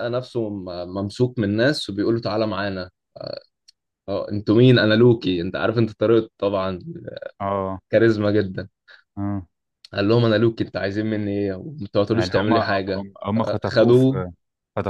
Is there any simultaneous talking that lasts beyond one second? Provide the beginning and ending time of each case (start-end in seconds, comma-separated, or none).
12.1-14.2